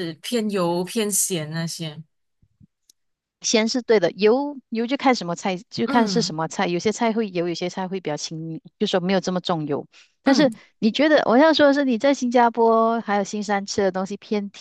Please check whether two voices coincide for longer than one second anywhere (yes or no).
no